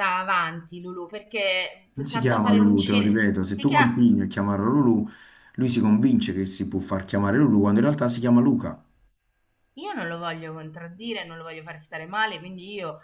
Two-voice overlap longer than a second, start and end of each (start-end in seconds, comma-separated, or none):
1.9-4.0